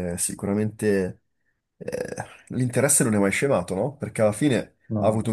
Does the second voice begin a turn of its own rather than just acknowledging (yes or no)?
no